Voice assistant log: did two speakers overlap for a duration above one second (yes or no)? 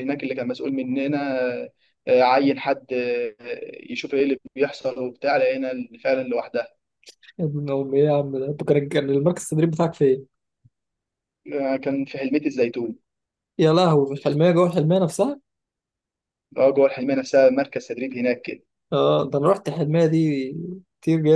no